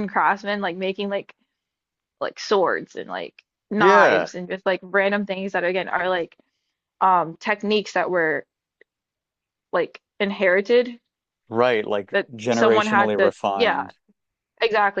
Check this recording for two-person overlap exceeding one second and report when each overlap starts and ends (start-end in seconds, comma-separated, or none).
12.1-13.9